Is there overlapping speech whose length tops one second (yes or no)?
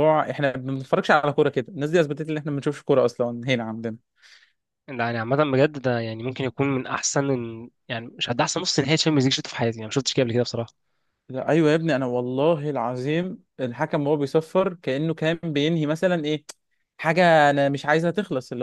no